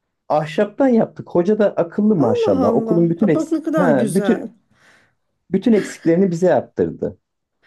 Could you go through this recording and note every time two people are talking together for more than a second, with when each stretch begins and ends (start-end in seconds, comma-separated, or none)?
2.2-4.5